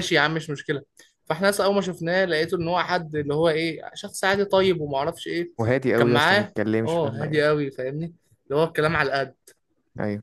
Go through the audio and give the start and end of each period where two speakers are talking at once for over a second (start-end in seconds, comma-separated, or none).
6.0-7.5